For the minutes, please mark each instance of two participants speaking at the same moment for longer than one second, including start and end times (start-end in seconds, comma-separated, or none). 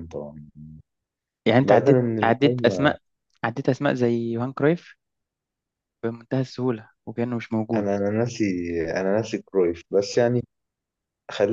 1.6-3.0